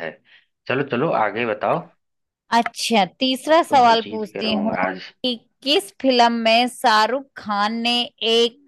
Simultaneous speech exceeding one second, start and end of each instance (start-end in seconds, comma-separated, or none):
3.5-5.0